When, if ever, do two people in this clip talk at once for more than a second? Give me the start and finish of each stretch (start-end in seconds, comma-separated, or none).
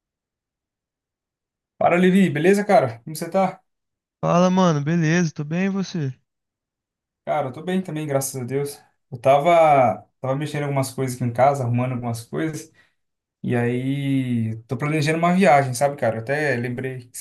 none